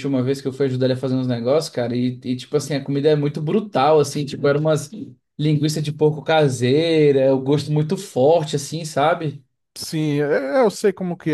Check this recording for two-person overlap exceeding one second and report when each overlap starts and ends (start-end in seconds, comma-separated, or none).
none